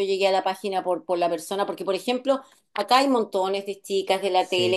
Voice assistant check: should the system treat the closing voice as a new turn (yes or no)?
no